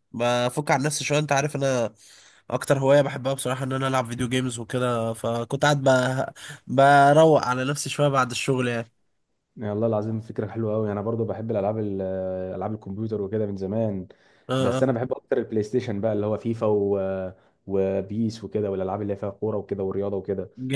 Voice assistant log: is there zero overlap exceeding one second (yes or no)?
yes